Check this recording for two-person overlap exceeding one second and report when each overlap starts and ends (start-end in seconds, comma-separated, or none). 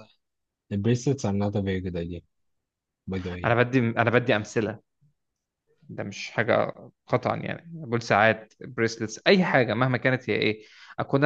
none